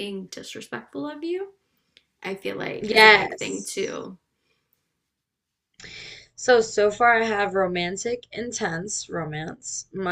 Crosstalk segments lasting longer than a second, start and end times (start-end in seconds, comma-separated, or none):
2.8-4.0